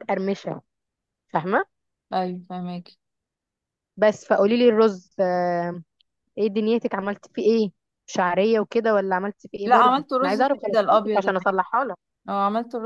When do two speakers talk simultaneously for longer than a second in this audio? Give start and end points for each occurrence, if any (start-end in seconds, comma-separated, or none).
9.6-11.6